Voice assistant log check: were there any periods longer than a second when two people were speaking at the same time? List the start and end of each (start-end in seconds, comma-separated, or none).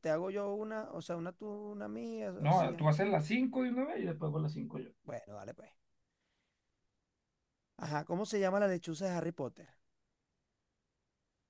none